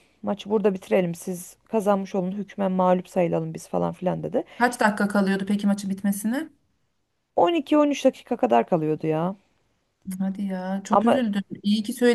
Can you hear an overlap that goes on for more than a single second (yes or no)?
no